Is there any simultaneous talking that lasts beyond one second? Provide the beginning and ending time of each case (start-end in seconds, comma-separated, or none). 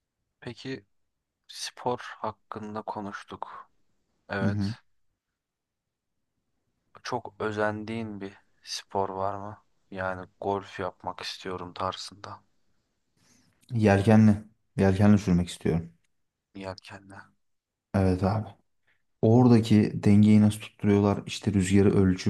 none